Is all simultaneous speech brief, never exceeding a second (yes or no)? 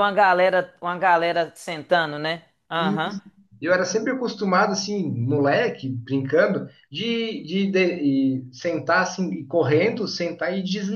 yes